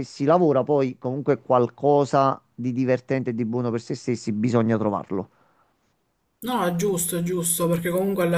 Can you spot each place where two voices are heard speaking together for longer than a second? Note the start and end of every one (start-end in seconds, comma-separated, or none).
none